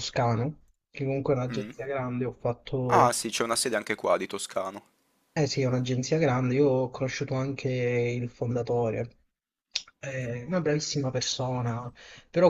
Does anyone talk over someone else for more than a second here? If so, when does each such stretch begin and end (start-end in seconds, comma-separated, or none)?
none